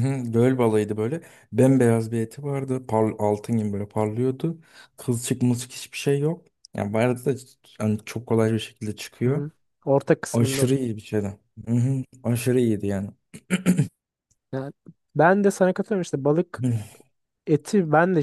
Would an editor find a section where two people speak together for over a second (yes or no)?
no